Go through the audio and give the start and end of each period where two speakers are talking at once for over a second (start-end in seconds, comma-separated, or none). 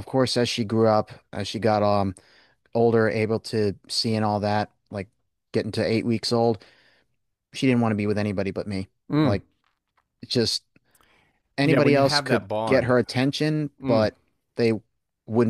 11.6-12.9